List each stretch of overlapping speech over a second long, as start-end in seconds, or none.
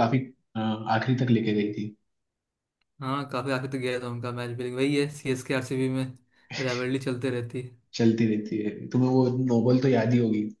none